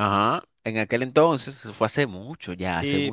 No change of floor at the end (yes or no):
no